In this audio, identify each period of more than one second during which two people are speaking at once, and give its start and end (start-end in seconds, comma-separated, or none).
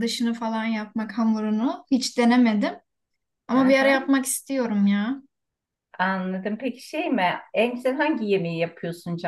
none